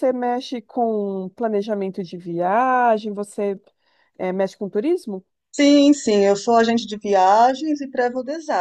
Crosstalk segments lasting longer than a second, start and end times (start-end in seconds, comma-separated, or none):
none